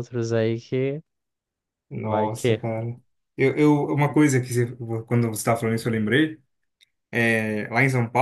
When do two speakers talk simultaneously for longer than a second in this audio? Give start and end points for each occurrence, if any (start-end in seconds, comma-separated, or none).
none